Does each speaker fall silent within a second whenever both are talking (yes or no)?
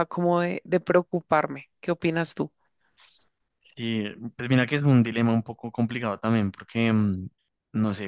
yes